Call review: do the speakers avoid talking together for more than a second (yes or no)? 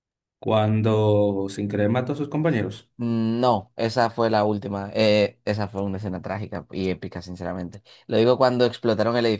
yes